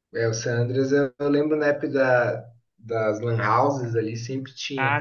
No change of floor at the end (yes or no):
no